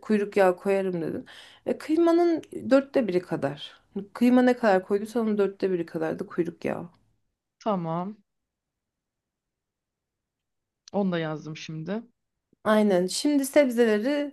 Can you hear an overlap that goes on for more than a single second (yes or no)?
no